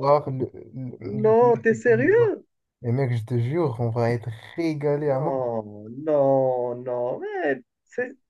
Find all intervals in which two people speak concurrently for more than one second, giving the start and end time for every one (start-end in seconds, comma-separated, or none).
1.0-2.4